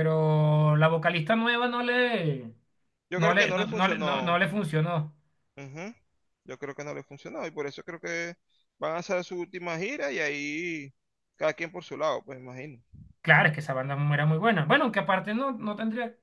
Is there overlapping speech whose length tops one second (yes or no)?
yes